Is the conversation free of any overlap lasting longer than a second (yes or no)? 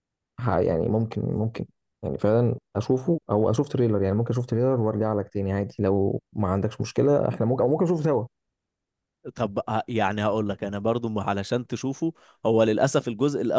yes